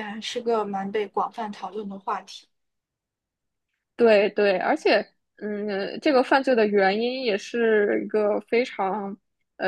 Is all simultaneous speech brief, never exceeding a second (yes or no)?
yes